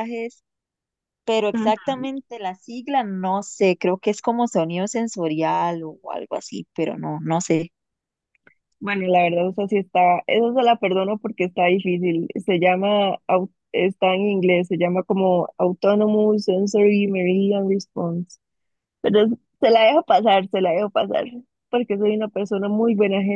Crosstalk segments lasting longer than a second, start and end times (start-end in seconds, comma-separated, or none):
none